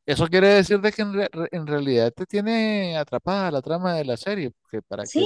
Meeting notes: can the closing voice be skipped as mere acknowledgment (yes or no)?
no